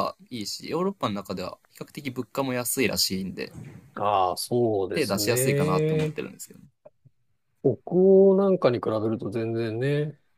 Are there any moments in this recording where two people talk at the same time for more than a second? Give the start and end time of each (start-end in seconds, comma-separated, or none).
4.9-6.2